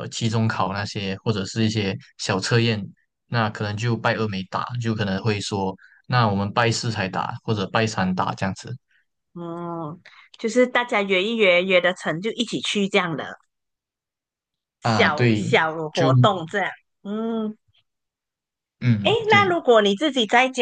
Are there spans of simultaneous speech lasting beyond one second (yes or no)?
yes